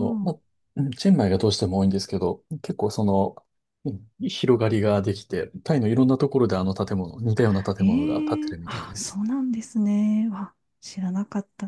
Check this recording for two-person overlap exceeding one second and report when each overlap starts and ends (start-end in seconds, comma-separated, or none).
7.8-9.2